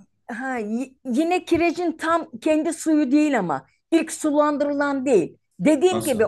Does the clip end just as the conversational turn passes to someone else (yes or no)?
no